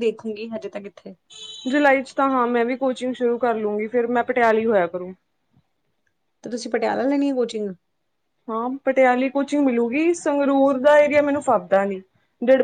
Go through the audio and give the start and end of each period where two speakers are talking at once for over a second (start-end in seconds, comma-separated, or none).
none